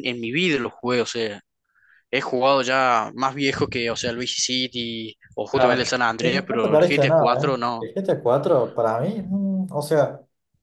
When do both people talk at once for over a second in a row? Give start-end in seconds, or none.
5.5-7.9